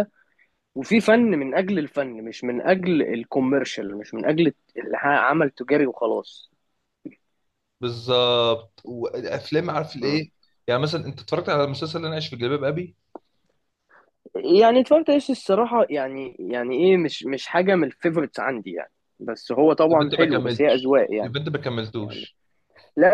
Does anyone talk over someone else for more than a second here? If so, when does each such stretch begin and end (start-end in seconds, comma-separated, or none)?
19.9-21.3